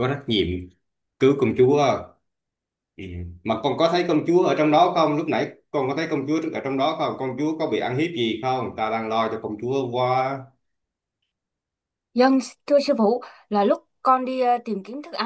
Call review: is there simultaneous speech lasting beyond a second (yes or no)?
no